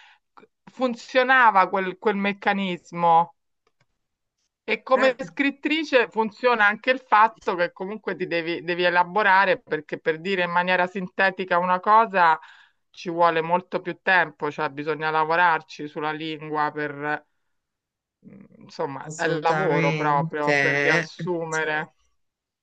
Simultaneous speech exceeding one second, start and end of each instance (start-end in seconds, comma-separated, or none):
19.0-20.3